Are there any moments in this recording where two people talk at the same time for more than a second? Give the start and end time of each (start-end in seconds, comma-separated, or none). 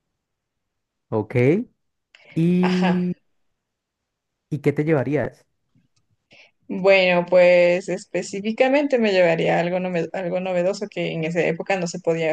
none